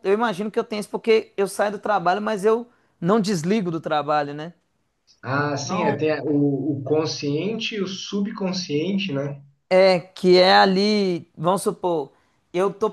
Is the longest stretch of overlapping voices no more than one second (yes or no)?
yes